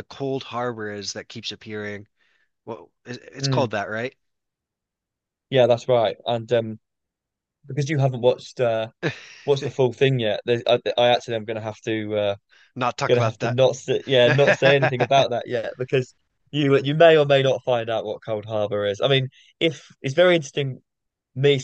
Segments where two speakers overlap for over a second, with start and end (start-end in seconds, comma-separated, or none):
14.0-15.3